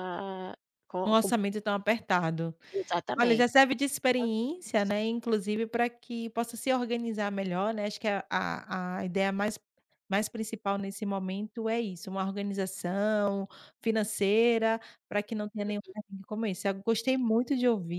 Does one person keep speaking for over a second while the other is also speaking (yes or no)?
no